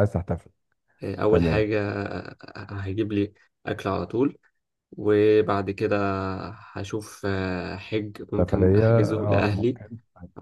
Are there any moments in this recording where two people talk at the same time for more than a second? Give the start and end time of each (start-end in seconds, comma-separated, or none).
8.4-9.8